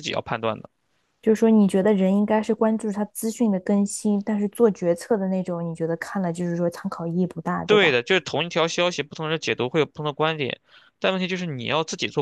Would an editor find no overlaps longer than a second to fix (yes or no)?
yes